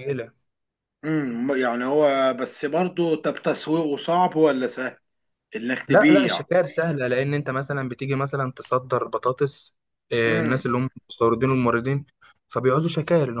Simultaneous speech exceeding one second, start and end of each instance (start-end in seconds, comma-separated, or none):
none